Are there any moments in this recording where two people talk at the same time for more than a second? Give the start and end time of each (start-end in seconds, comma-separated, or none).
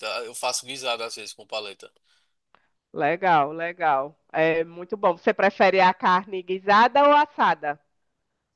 none